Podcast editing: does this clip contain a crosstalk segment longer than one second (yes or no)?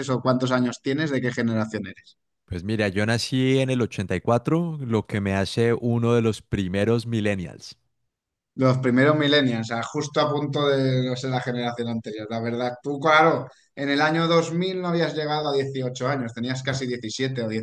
no